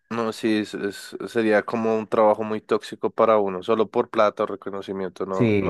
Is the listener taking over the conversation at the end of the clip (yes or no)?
yes